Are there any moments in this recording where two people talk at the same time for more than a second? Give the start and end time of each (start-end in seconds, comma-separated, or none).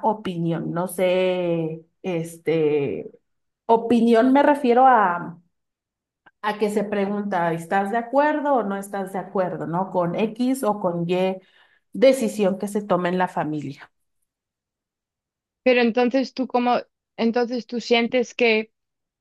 none